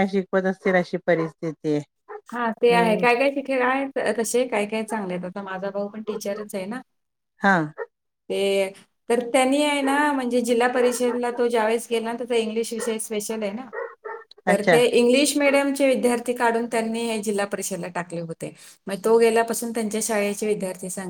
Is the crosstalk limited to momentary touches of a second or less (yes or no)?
yes